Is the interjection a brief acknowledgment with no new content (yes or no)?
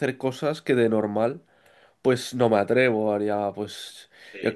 yes